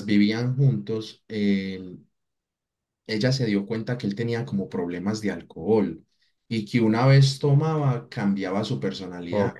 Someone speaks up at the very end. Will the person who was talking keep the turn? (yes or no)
yes